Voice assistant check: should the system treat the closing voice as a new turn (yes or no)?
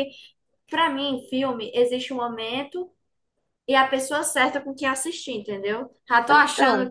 no